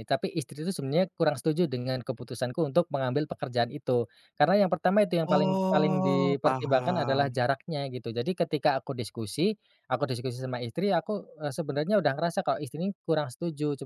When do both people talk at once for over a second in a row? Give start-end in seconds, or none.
5.3-7.4